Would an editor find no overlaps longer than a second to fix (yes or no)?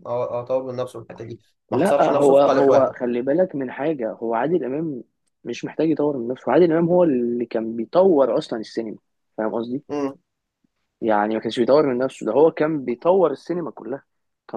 no